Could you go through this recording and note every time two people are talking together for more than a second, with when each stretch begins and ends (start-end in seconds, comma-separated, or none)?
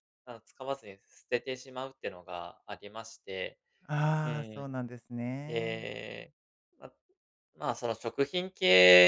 none